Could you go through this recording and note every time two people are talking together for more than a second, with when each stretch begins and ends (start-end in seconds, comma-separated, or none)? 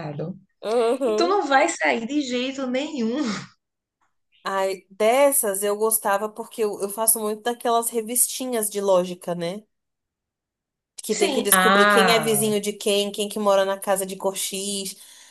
11.1-12.5